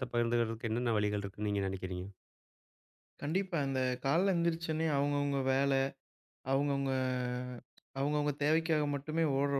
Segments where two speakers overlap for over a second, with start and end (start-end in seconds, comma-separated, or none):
none